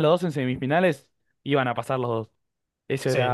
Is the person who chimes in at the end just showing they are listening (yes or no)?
no